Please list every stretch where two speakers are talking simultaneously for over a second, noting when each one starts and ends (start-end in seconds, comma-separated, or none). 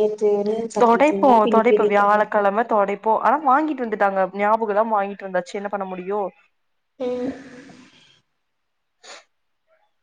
none